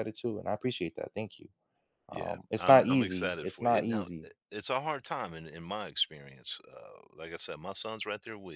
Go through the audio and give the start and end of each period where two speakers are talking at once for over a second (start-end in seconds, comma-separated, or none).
2.1-4.3